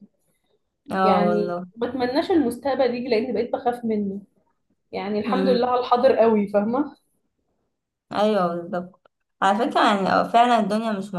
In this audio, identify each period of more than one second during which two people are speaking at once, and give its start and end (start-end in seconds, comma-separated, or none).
none